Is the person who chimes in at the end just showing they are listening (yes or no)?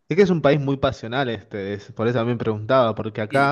no